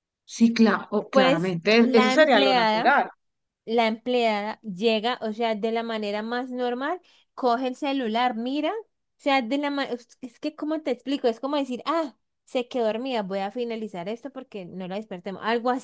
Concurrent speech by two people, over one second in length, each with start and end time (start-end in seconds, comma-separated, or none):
1.1-2.9